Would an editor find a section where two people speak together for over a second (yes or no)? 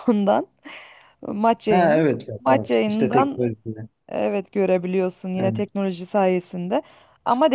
yes